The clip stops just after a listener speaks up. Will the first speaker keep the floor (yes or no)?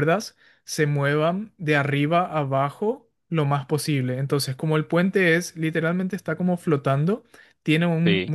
yes